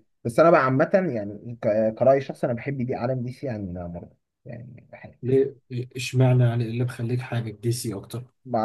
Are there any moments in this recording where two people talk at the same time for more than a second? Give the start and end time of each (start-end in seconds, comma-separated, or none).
none